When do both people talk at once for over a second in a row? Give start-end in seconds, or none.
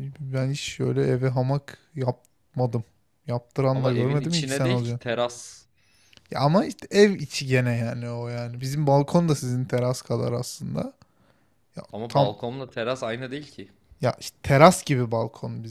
3.7-5.0